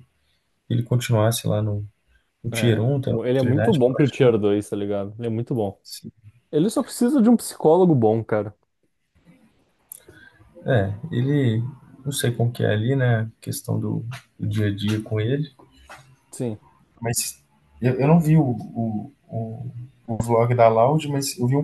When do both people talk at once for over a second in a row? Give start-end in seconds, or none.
2.5-4.3